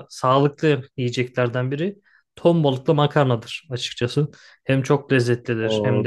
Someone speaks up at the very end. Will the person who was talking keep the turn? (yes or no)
no